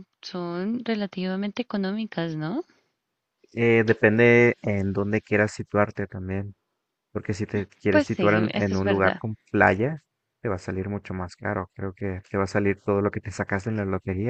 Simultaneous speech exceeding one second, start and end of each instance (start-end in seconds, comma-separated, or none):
7.9-9.2